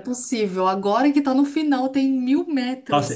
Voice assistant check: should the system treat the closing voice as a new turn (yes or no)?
yes